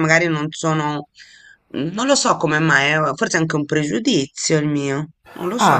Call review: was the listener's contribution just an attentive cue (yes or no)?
no